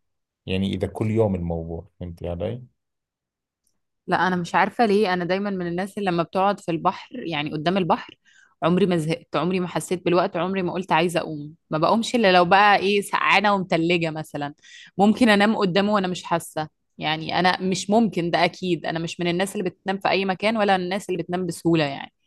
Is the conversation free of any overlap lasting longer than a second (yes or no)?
yes